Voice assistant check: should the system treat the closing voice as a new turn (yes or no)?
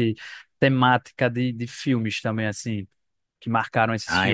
yes